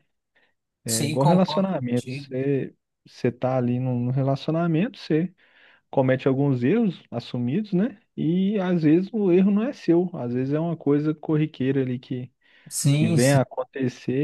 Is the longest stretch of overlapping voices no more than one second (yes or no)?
no